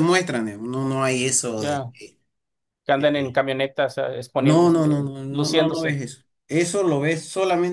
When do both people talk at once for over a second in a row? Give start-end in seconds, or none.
4.4-6.0